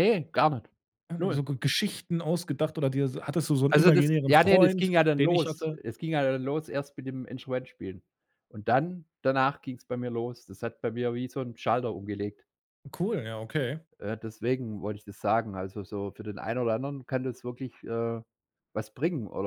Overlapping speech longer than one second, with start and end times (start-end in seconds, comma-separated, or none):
3.7-5.8